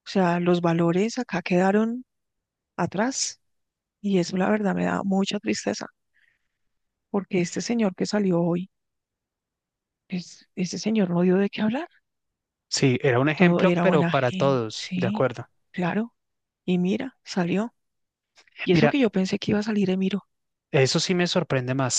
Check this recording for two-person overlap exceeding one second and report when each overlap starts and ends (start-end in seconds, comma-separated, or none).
13.3-15.3